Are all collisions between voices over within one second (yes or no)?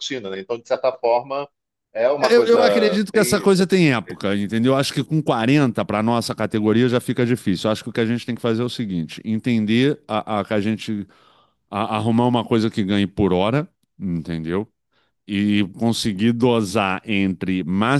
no